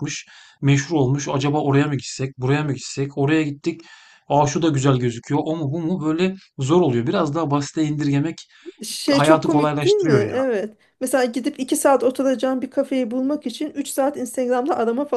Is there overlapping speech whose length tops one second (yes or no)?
yes